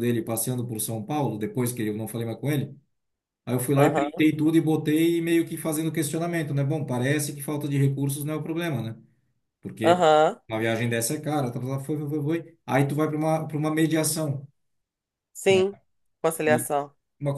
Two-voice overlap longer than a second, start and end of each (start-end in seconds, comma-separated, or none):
none